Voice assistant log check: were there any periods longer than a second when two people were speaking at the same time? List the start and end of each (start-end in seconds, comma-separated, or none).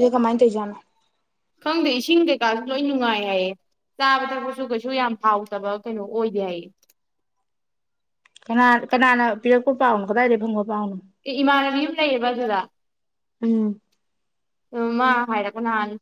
none